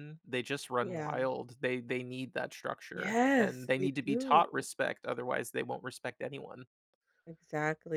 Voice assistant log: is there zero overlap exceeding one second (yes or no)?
no